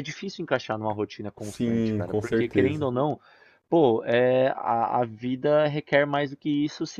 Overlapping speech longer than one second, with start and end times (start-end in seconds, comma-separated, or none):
1.4-2.9